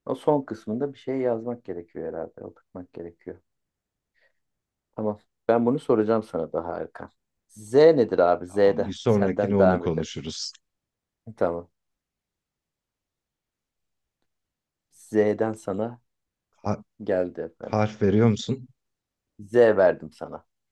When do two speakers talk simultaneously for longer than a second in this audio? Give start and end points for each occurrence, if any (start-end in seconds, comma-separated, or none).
8.5-10.1